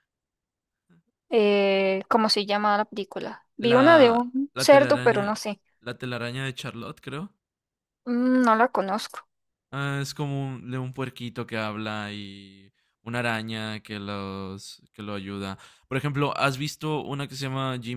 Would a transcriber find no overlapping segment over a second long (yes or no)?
no